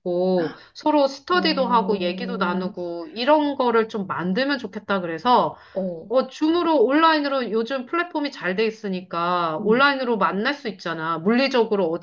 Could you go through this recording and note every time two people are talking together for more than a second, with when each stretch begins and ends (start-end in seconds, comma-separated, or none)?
1.3-2.7